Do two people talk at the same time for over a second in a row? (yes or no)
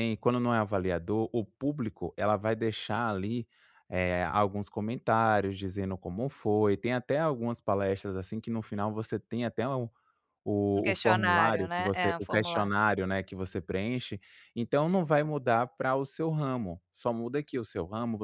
yes